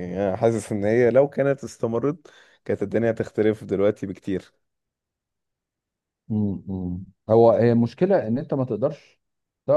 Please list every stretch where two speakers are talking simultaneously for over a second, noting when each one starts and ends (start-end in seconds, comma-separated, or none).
none